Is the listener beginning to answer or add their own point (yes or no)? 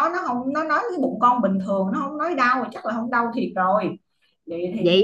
yes